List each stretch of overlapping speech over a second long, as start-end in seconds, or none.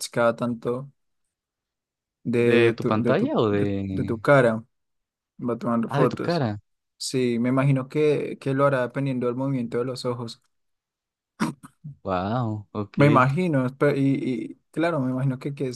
2.4-4.2